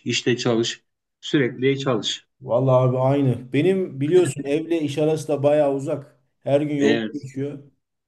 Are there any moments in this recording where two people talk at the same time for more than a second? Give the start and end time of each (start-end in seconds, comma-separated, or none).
none